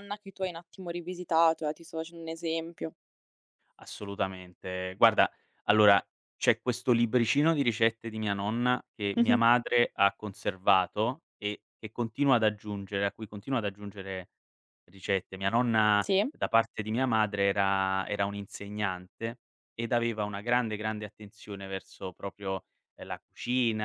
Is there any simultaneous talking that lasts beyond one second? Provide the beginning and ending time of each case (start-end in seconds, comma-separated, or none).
none